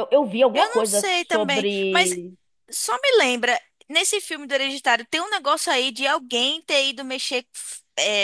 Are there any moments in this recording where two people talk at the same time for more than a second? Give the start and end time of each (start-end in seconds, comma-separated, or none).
0.5-2.1